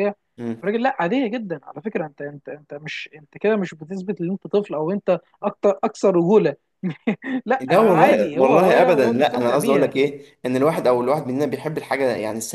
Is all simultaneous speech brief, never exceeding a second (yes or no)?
no